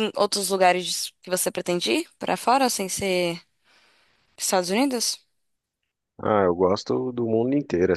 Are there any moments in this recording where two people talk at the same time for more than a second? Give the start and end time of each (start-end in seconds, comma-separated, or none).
none